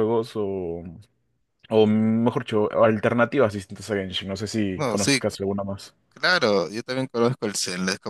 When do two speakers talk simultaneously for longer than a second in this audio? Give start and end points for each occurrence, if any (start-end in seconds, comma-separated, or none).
none